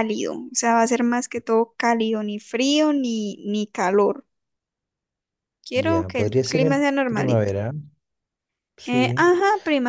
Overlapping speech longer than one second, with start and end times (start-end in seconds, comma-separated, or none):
5.7-7.5